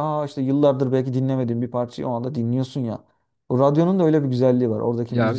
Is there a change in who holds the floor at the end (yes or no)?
yes